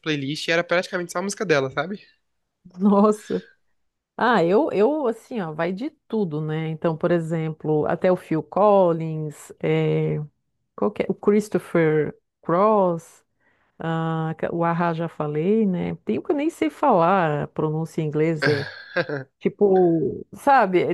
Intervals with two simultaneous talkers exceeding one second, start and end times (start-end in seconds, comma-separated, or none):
none